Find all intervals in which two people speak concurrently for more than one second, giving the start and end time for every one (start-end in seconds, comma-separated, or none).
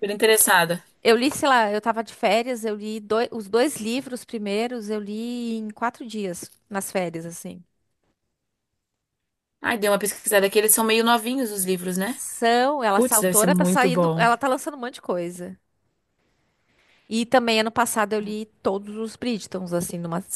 12.9-14.3